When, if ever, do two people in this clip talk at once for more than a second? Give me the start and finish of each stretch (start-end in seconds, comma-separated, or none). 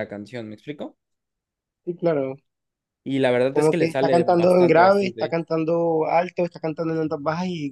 3.5-5.3